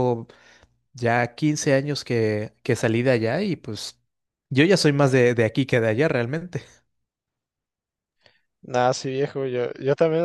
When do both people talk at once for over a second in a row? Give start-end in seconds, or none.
none